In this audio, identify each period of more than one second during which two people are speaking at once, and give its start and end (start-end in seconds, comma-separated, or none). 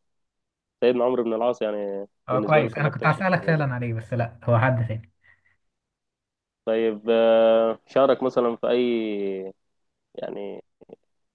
2.3-3.6